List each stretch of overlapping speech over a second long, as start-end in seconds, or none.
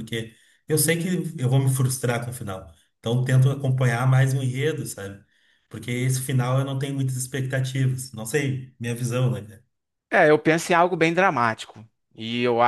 none